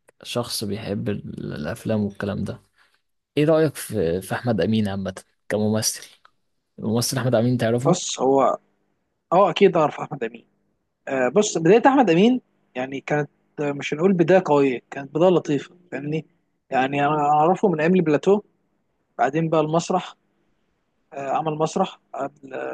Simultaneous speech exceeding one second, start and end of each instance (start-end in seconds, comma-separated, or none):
none